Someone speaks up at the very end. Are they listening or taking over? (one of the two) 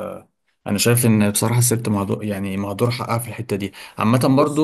listening